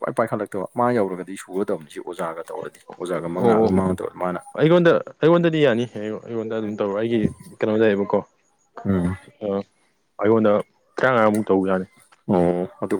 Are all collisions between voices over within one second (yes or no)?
yes